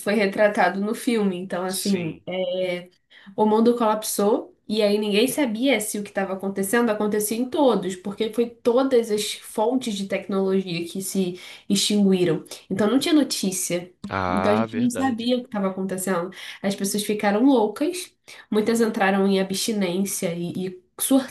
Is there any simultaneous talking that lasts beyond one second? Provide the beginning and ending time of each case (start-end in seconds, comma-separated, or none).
14.1-15.3